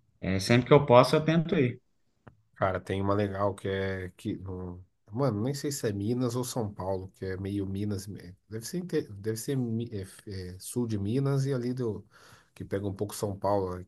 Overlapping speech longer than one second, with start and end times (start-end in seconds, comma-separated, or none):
none